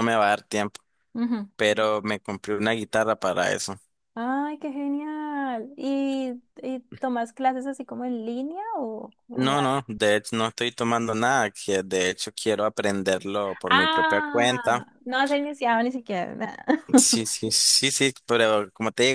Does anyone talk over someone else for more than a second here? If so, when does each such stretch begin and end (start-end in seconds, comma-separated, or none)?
13.7-14.8